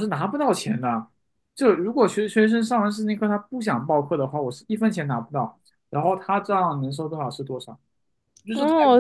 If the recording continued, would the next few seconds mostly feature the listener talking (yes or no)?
yes